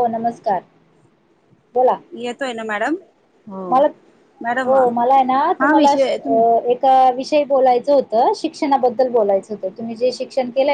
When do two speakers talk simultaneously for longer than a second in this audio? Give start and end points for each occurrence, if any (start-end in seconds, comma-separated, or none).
none